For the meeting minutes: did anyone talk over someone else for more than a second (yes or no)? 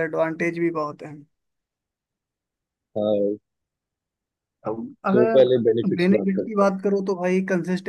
yes